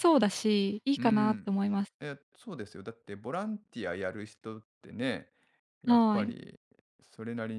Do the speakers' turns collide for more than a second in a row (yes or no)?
no